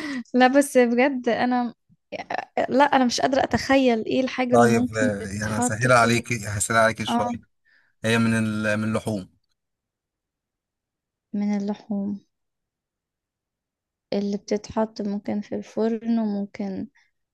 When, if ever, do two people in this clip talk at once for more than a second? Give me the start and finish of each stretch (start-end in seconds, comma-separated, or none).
4.5-6.2